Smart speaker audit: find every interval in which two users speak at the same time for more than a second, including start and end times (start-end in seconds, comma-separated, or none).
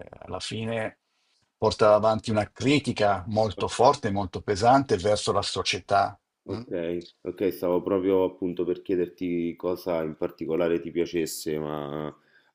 none